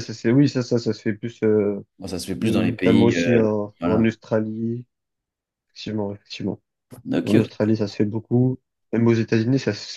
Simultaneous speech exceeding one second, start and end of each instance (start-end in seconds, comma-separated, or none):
2.4-4.1